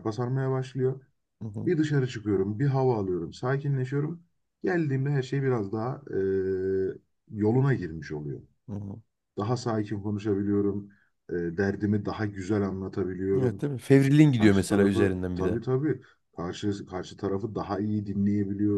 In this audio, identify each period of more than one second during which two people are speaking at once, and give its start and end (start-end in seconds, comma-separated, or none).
14.4-15.6